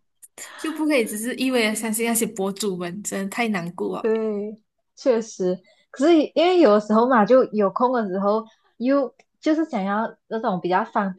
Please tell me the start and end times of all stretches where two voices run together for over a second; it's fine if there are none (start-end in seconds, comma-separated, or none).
none